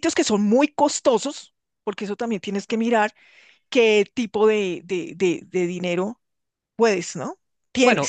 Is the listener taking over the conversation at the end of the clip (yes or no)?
yes